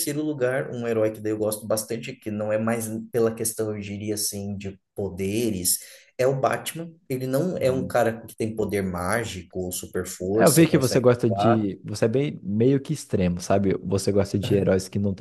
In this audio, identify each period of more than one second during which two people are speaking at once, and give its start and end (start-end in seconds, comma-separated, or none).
10.3-11.7